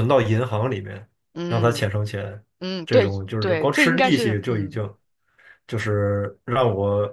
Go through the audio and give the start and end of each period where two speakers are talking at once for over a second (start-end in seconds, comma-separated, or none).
2.8-4.8